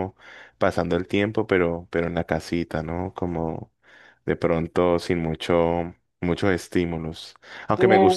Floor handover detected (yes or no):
no